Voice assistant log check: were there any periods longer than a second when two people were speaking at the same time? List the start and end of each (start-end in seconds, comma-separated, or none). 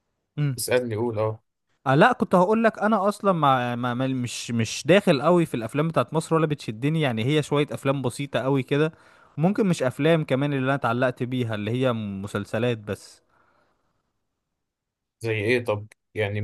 none